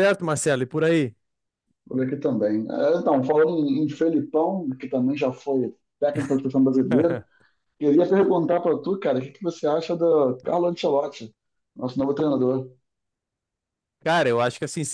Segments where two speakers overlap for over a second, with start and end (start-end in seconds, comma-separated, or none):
none